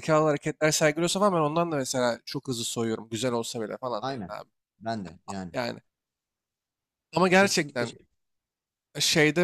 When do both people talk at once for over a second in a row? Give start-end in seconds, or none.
none